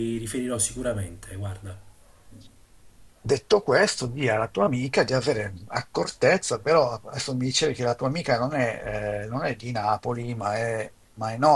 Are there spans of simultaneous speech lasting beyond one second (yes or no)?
no